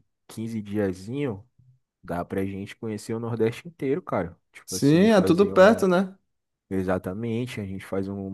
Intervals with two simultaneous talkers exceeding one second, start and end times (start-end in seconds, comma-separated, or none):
4.7-5.8